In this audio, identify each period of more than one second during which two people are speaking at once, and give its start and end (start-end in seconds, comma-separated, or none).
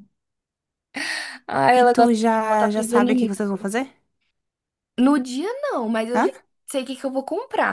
1.7-3.3